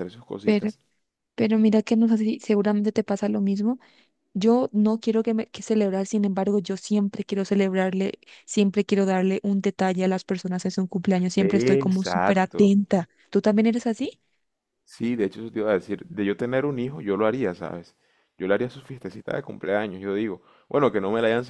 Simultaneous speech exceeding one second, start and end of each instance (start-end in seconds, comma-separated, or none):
11.4-12.6